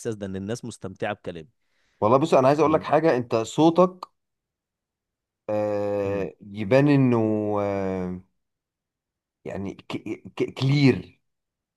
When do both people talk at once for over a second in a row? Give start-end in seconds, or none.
none